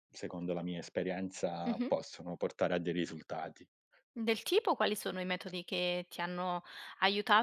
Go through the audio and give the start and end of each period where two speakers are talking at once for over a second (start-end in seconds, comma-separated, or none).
none